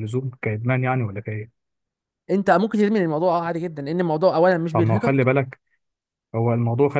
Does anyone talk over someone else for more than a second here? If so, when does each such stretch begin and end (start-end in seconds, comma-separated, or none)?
none